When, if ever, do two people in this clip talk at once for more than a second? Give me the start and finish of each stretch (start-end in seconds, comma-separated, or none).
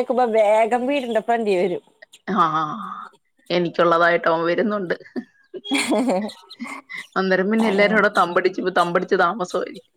none